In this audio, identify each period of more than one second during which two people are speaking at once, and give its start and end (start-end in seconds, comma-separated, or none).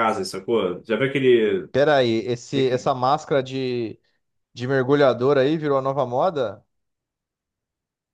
none